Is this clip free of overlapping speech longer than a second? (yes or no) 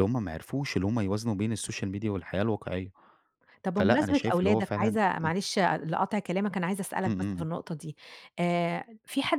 no